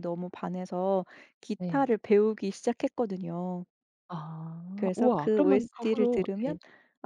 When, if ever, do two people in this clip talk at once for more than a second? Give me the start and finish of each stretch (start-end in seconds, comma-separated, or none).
4.8-6.5